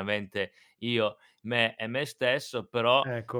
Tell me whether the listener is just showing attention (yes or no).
yes